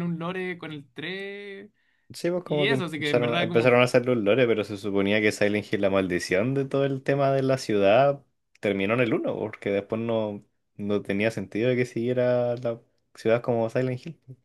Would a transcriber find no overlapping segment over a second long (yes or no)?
no